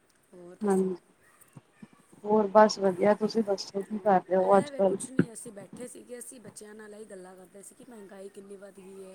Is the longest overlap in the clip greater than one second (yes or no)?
no